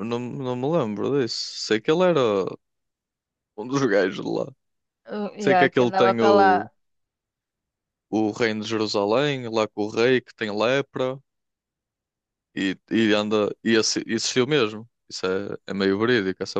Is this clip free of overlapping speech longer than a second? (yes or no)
no